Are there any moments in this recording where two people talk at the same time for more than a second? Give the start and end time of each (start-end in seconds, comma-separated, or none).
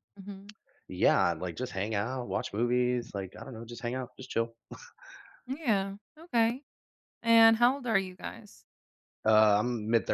none